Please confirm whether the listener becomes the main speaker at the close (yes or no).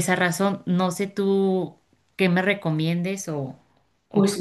yes